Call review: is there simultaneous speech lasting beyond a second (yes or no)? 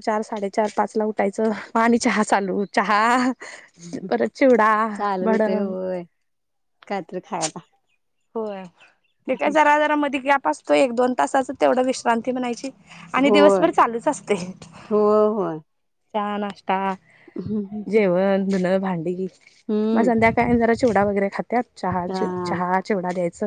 no